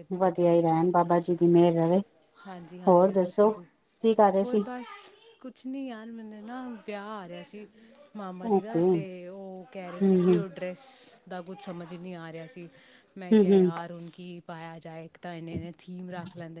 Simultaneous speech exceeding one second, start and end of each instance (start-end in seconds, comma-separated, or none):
none